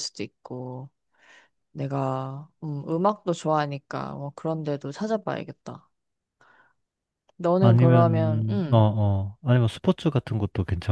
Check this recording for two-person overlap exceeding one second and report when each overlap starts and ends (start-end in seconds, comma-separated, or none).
7.6-8.9